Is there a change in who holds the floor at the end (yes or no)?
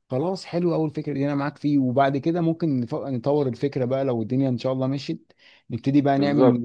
no